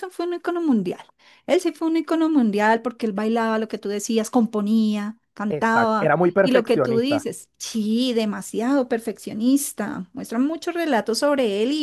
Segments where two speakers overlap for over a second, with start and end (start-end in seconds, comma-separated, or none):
5.5-7.3